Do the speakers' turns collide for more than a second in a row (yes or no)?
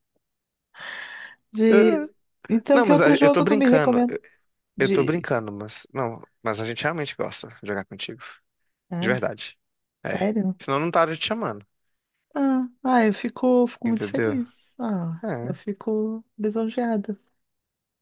yes